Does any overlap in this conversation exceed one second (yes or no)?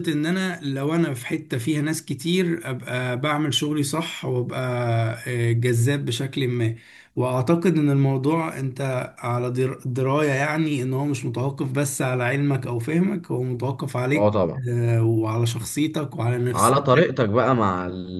no